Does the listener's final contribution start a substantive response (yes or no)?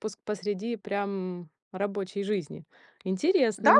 yes